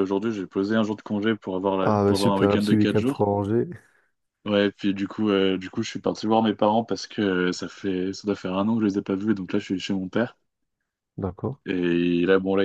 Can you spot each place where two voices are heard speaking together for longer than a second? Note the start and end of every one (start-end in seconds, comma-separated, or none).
1.8-3.2